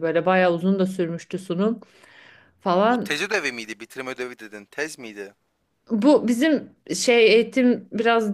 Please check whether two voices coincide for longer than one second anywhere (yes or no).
no